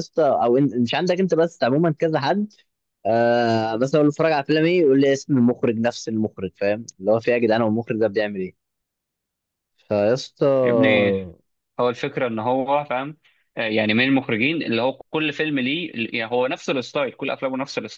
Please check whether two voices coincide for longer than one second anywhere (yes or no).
no